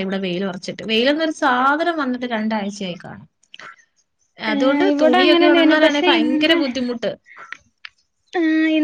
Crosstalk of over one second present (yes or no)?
yes